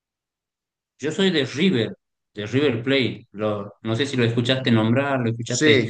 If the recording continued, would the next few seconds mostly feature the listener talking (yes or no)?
yes